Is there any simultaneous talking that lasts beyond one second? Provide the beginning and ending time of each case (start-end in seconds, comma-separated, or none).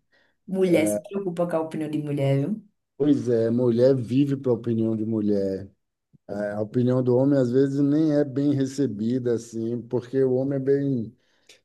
none